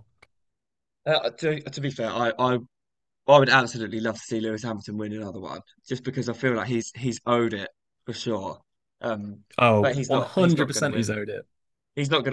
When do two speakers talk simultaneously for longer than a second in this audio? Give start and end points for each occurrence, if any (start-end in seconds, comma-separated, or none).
9.8-11.1